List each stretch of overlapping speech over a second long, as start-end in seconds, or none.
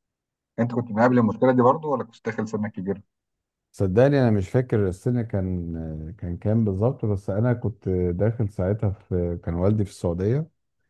none